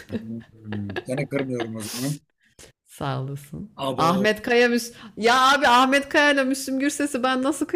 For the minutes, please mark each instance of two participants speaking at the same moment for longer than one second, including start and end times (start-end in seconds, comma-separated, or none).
none